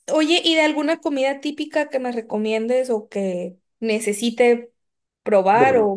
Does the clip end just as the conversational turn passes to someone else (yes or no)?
no